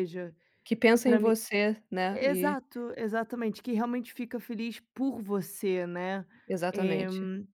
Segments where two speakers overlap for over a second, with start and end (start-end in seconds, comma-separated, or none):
none